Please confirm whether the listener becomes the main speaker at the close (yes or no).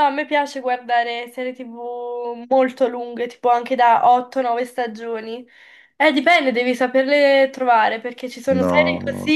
no